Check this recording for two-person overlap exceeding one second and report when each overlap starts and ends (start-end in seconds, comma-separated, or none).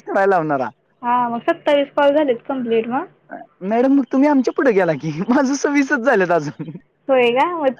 none